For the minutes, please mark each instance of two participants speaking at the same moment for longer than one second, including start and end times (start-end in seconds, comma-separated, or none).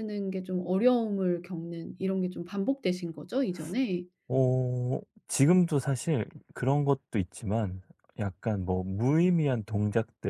none